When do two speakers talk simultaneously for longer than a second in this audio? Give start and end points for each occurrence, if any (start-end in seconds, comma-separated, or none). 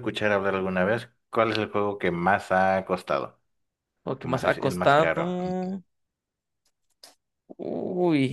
4.2-5.5